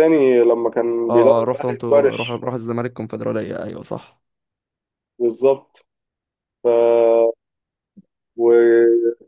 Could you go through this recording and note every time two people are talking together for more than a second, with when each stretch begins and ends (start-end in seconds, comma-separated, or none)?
1.1-2.4